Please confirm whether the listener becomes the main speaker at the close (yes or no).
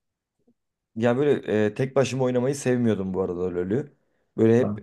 no